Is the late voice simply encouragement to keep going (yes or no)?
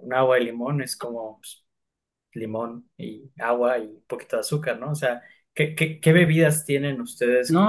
no